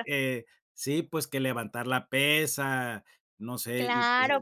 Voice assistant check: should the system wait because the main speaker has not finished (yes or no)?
no